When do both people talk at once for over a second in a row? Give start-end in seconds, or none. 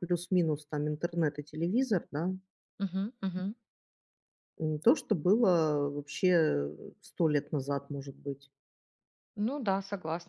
none